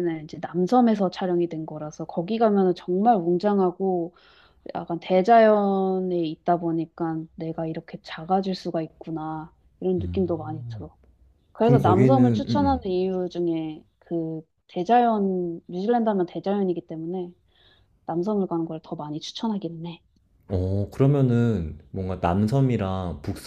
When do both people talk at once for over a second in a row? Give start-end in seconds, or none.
11.6-12.8